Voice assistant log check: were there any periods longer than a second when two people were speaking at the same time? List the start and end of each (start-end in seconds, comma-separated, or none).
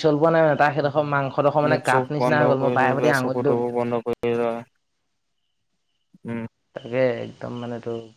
1.7-3.5